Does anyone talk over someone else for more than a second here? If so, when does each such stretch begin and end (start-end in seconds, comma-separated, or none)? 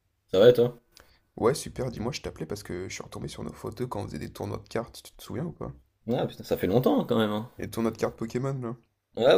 none